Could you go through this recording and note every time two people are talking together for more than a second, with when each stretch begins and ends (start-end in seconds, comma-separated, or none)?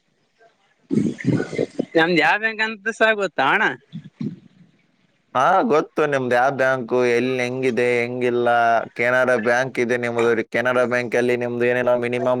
none